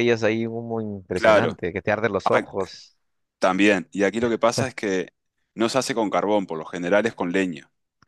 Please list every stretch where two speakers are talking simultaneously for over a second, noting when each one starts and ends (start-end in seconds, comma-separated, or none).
none